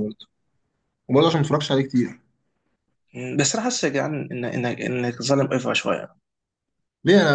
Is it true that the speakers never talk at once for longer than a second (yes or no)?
yes